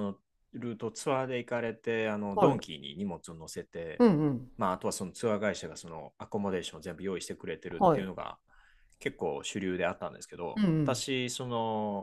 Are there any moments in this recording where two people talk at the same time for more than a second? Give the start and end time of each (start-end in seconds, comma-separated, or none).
none